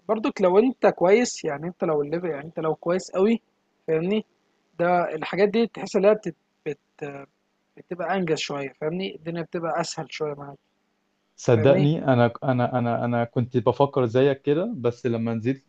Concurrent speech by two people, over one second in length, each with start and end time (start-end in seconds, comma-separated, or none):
none